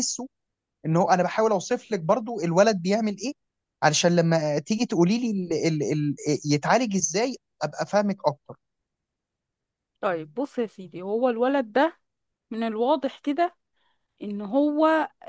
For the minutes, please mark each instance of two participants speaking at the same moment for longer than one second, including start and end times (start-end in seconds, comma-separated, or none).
none